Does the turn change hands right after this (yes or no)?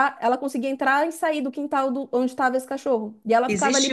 yes